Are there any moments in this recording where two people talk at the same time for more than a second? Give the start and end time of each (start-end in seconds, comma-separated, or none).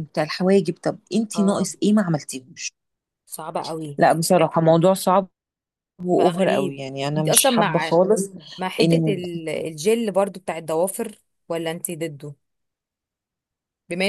6.1-7.9